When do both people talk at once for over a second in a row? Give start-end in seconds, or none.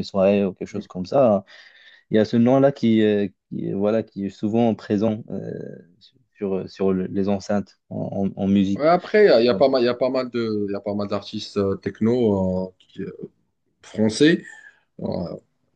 none